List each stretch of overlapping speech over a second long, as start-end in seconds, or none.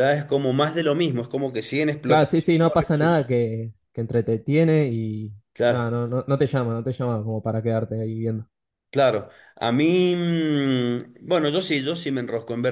2.1-3.3